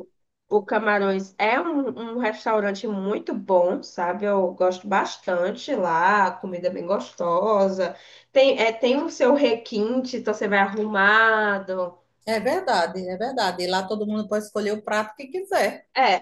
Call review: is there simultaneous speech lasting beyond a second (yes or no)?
no